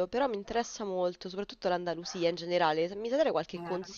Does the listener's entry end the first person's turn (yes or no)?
no